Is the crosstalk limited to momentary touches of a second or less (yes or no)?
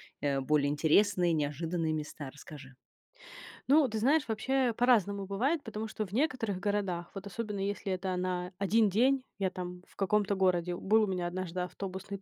yes